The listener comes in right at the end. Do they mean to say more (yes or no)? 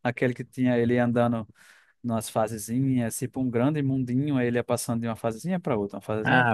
yes